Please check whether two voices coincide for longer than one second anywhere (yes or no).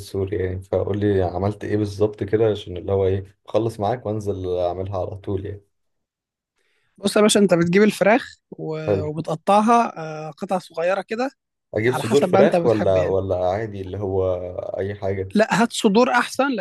yes